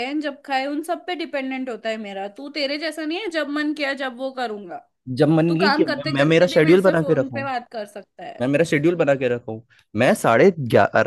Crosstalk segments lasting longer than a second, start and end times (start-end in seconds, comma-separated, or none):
5.5-7.5